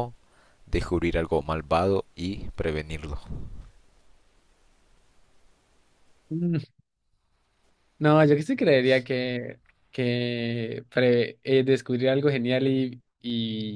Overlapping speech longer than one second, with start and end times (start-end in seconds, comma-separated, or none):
none